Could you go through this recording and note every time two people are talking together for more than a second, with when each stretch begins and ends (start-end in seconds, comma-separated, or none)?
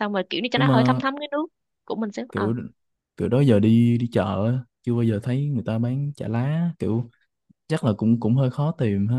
none